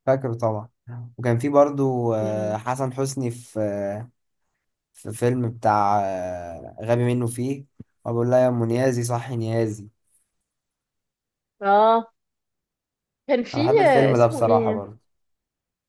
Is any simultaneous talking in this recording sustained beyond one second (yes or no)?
yes